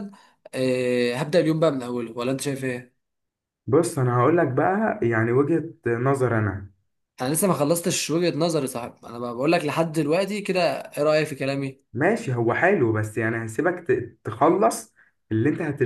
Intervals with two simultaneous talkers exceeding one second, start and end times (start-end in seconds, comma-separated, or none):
none